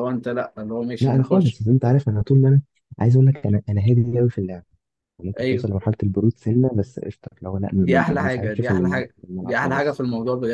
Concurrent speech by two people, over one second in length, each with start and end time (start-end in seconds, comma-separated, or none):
7.8-10.0